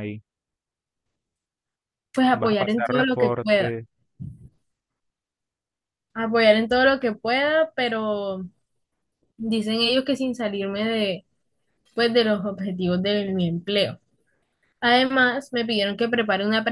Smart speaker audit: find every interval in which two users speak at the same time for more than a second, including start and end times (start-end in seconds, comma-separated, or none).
2.4-3.8